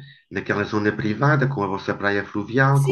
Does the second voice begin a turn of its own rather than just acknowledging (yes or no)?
yes